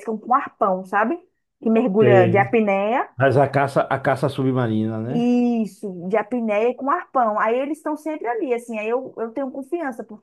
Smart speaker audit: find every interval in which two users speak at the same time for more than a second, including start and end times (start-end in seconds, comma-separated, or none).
none